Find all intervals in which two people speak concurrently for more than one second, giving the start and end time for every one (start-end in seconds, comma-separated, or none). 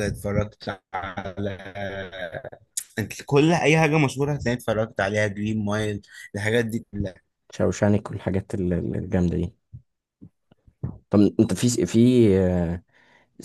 none